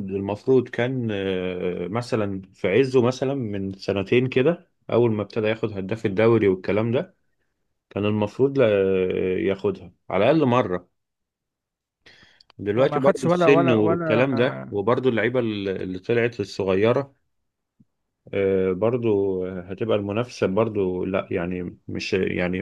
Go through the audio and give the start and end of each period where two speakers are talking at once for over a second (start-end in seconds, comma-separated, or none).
12.8-14.8